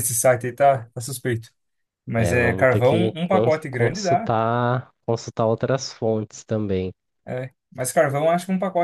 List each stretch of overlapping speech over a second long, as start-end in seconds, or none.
2.1-4.3